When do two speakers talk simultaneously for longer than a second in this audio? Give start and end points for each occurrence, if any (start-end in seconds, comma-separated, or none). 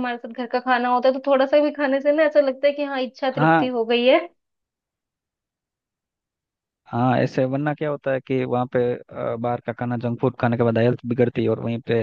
none